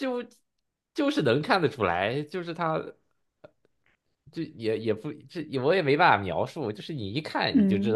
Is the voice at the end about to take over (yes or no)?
no